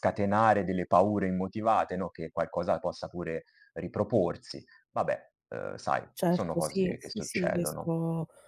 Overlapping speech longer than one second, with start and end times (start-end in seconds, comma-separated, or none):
6.1-7.9